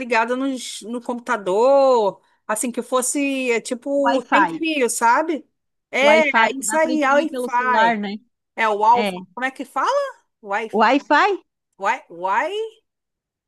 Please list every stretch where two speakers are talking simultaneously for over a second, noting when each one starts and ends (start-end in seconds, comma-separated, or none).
6.0-8.0